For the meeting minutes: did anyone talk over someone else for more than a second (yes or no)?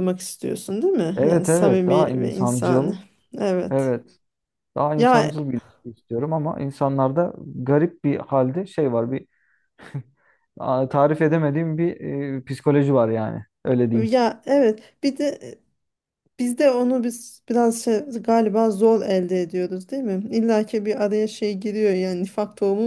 yes